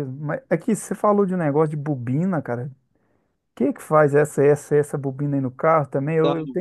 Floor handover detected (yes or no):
no